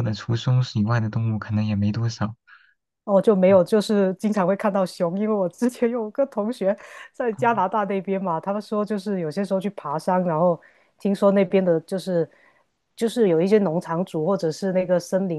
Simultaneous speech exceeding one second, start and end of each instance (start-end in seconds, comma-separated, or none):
none